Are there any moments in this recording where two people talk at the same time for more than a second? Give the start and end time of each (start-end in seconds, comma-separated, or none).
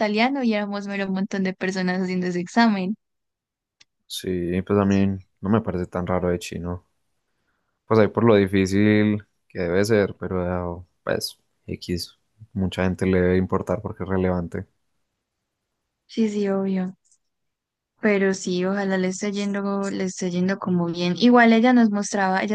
none